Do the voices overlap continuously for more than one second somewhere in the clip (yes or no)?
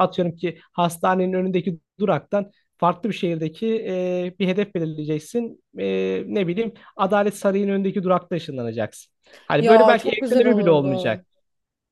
yes